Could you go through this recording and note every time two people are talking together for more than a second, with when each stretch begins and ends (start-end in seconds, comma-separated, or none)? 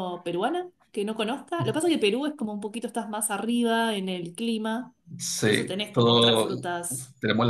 5.4-6.6